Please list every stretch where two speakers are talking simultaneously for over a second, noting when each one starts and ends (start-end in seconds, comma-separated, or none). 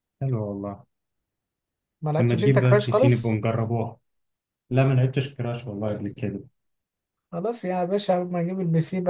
2.2-3.4